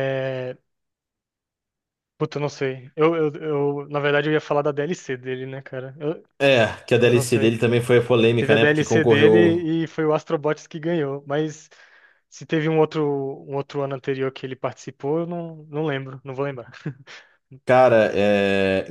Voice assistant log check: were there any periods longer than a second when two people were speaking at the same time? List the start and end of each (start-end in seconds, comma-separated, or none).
8.4-9.6